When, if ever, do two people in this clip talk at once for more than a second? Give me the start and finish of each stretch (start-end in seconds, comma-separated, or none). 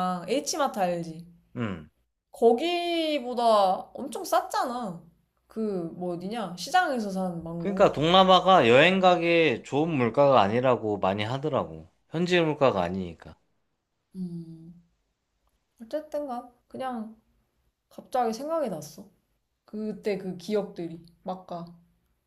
none